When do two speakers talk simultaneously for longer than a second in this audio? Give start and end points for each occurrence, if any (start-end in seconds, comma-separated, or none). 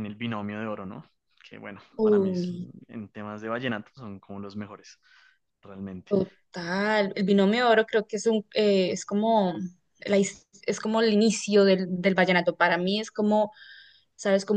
none